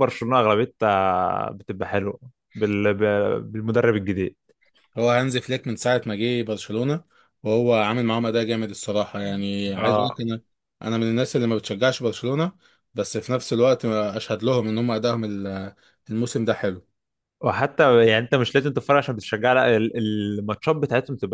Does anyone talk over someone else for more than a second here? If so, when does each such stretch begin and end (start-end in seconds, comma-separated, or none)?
none